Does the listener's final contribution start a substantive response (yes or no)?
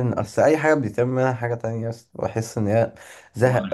no